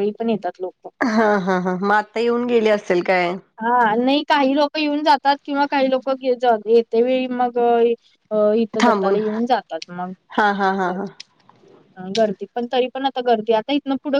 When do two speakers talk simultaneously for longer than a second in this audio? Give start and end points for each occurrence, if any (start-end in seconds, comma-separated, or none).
none